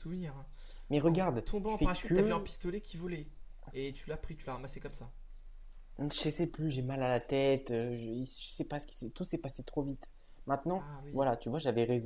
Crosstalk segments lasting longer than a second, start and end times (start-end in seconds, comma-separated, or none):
1.1-2.5